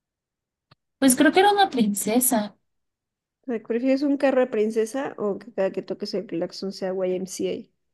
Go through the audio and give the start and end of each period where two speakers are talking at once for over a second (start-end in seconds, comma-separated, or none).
none